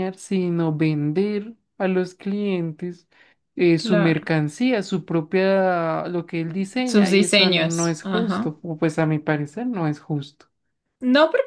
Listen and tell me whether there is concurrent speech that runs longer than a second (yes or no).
yes